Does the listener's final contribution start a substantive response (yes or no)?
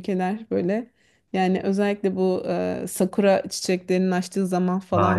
no